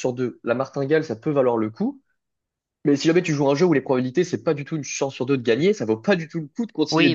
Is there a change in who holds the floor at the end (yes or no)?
yes